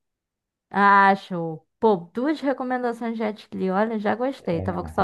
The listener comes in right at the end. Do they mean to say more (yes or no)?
yes